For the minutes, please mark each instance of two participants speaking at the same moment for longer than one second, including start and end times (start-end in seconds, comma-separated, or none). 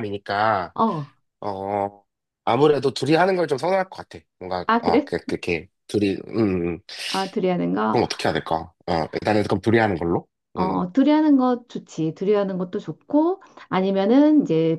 none